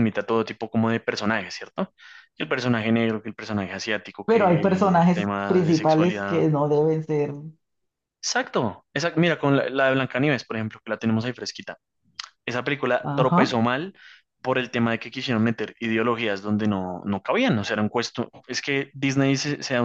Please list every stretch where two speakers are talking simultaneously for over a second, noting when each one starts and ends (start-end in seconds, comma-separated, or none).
4.2-6.4